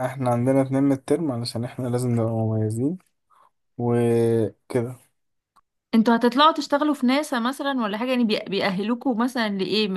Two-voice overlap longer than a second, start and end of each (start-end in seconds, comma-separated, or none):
none